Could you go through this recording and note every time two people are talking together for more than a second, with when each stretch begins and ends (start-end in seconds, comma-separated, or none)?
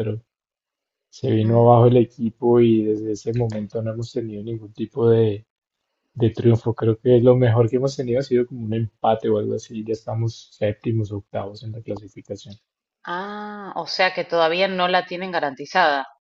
none